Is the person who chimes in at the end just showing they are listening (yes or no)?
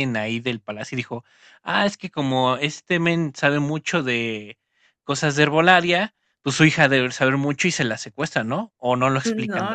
no